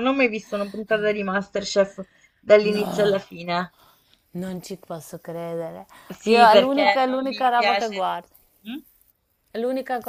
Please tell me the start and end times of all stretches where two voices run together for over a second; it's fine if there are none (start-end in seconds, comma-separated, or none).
6.2-8.1